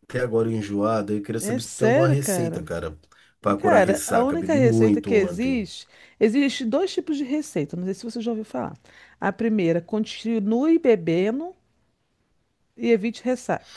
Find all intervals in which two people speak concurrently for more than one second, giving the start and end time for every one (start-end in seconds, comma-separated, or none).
1.4-2.6, 3.6-5.6